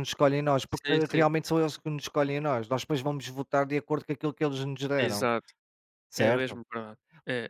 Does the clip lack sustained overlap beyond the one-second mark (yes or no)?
yes